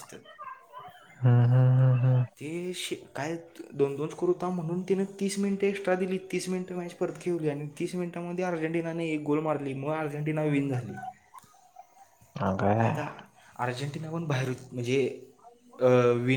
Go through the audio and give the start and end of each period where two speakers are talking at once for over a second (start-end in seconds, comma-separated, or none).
none